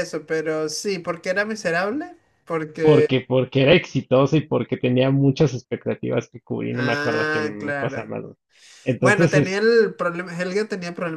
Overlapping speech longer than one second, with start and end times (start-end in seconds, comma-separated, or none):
6.7-8.2